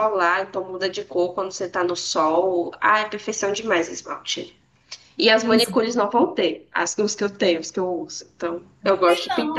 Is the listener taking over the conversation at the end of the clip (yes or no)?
yes